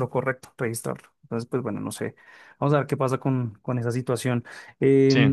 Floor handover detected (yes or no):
no